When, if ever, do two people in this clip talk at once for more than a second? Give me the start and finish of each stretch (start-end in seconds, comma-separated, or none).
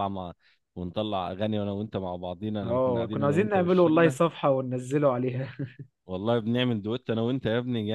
2.6-4.2